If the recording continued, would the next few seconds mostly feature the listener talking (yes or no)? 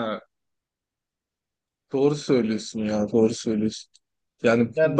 no